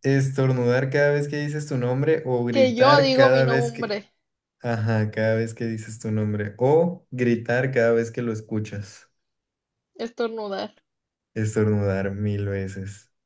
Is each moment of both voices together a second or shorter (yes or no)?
no